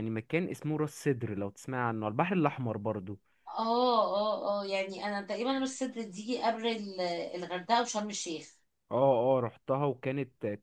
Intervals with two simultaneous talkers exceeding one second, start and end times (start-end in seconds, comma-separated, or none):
none